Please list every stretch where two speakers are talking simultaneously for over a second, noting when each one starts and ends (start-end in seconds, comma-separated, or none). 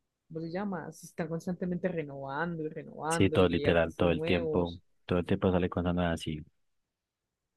3.1-4.8